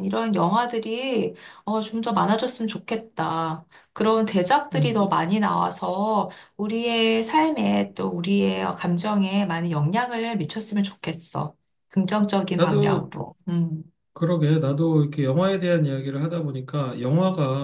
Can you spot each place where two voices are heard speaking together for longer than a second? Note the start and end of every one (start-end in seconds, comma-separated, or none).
none